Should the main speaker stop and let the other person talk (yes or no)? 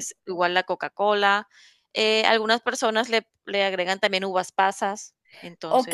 yes